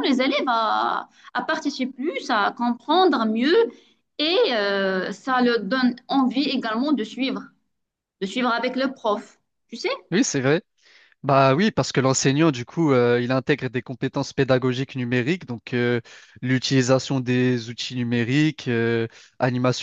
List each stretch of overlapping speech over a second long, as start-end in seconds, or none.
none